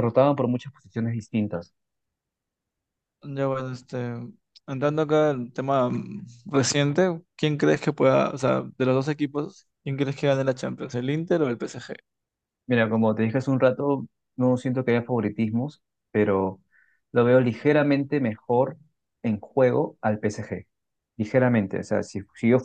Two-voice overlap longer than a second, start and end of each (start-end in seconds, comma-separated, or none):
none